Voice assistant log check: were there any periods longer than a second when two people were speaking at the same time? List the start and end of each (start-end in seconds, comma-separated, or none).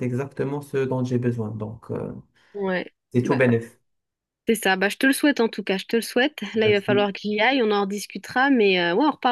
none